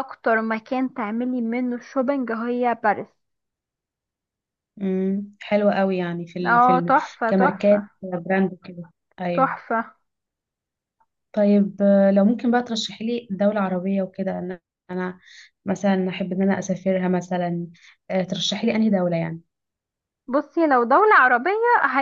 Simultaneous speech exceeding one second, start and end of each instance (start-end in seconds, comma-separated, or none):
6.5-7.8